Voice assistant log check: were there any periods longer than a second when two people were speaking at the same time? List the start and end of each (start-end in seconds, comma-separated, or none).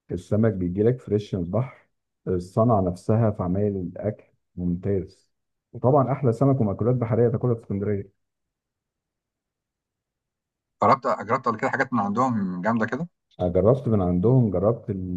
none